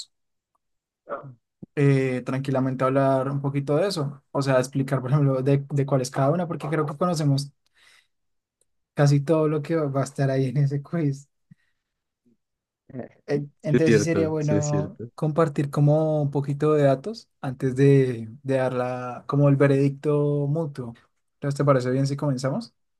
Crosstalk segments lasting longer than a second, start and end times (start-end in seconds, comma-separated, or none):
13.4-15.1